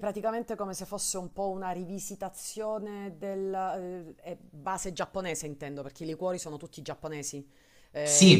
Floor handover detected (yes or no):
yes